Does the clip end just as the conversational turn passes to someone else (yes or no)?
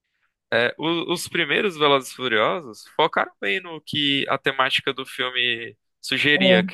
no